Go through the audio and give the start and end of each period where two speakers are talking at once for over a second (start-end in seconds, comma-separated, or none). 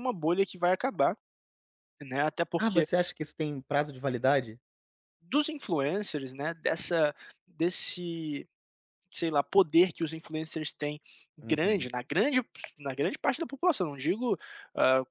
none